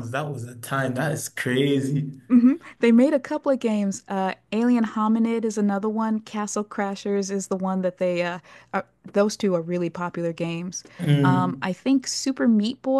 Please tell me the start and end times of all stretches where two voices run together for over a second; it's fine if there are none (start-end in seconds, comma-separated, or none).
none